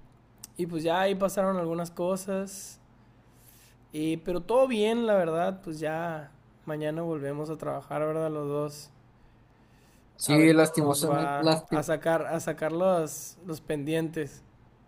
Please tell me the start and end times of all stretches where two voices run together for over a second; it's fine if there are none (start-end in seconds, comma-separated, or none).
10.2-11.8